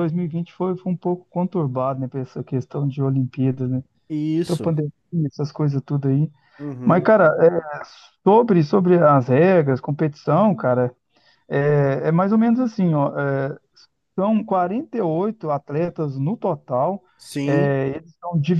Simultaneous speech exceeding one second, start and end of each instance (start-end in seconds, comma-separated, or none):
none